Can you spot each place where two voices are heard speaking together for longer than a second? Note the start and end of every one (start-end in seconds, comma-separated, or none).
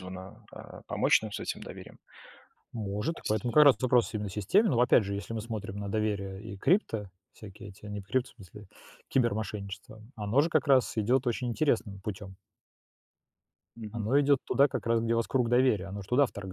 none